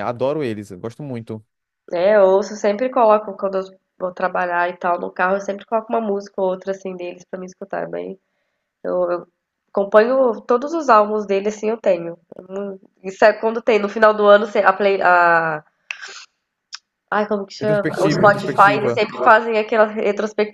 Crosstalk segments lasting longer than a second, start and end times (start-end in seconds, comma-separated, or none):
17.6-19.0